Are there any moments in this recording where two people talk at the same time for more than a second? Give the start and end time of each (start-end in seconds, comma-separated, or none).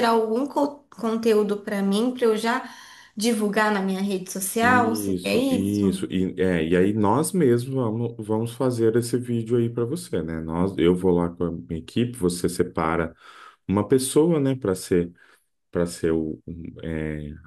4.6-6.0